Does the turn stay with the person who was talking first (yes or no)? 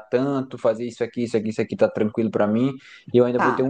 yes